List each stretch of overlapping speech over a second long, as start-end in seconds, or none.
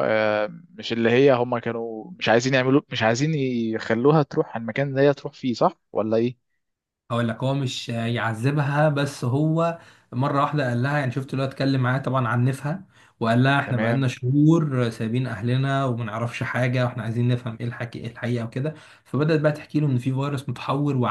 none